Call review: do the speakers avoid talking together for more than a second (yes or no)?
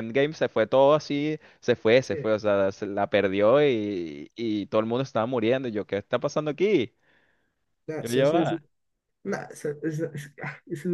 yes